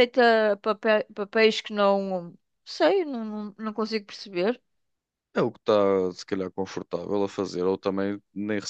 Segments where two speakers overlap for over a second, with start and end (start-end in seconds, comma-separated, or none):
none